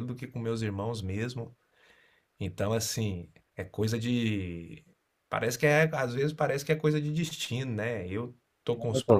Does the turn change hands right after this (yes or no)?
no